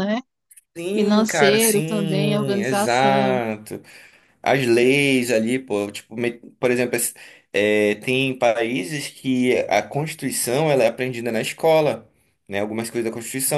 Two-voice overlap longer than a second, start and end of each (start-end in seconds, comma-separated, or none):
0.9-3.4